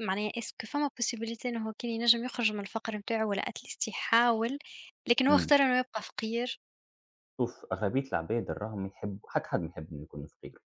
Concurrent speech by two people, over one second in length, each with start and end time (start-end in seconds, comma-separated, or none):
none